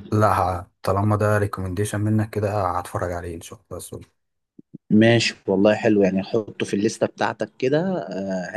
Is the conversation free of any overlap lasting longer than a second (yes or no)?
yes